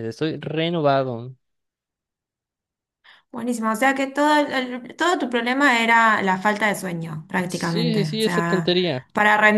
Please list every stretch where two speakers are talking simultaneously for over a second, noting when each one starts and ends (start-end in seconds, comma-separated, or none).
7.5-8.7